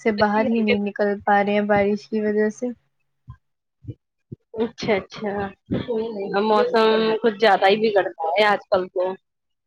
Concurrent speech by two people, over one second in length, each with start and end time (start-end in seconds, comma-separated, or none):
none